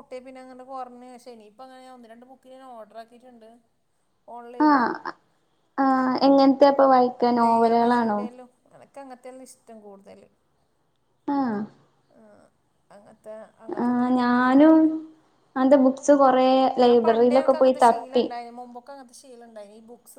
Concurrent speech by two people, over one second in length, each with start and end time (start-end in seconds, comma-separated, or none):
16.8-18.2